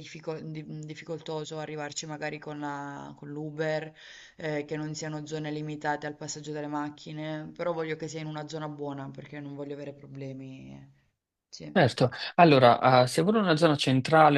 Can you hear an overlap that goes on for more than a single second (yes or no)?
no